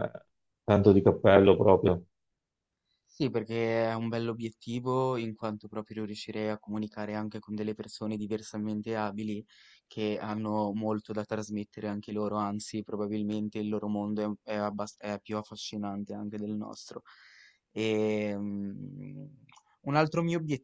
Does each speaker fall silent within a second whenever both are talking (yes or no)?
yes